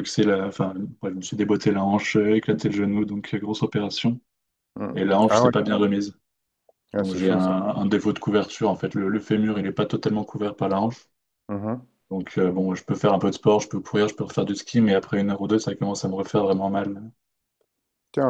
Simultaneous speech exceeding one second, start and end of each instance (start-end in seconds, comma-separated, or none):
none